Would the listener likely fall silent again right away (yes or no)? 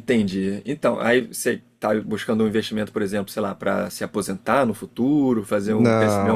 no